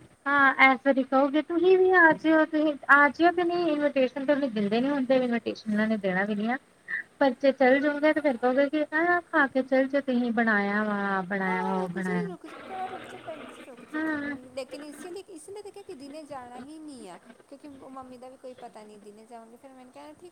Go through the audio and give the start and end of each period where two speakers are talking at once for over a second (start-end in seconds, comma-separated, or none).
none